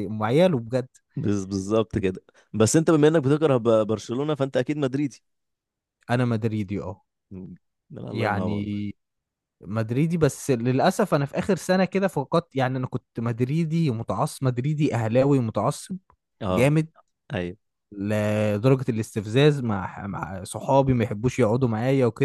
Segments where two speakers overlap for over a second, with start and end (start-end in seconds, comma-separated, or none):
none